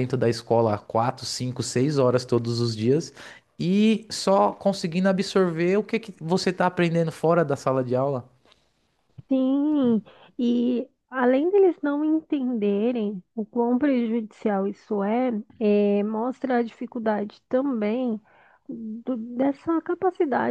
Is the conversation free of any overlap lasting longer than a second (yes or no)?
yes